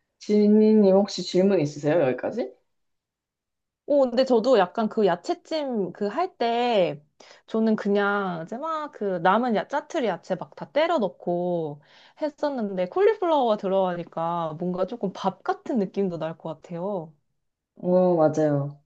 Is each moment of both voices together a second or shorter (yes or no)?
yes